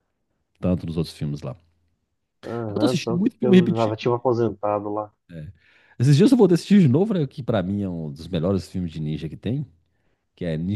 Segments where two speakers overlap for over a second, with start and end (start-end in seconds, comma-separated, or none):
2.7-4.0